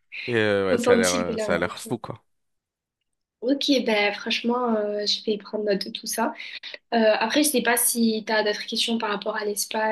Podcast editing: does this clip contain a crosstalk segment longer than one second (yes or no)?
yes